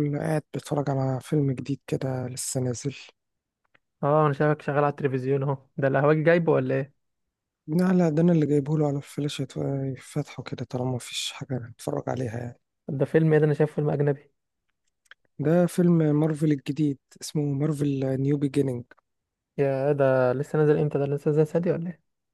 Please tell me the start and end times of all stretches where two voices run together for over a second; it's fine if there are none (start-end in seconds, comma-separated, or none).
none